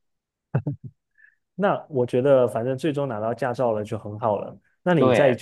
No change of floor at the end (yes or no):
yes